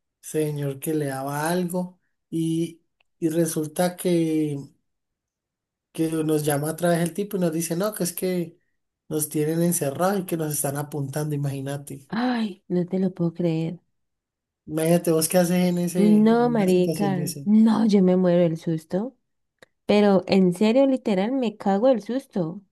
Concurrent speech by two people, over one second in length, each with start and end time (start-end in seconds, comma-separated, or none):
16.0-17.4